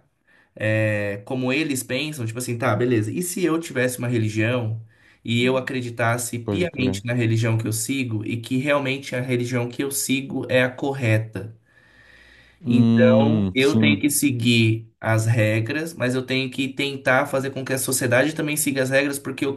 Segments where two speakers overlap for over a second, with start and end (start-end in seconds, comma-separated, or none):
12.7-14.0